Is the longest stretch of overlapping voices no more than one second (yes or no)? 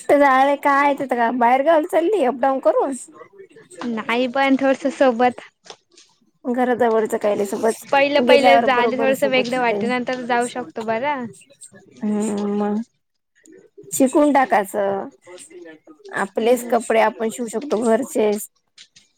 no